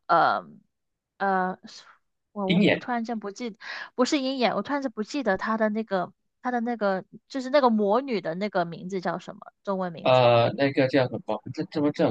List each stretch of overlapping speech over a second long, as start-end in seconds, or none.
none